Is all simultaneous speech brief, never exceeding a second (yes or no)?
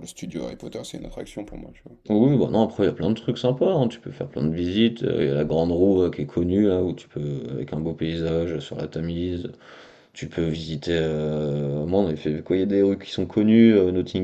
yes